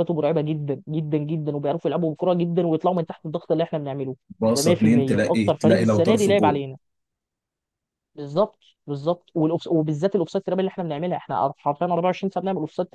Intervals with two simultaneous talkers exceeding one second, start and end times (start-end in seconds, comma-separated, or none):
4.5-6.6